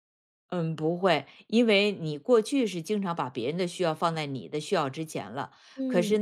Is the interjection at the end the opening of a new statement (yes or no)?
no